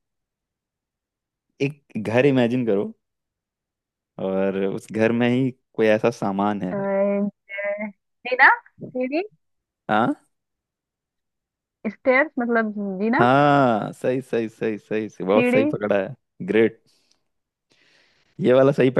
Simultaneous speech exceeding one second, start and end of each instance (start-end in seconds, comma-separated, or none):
none